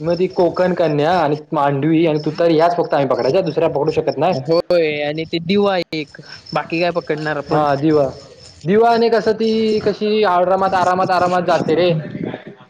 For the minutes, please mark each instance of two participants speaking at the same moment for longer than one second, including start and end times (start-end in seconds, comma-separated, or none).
none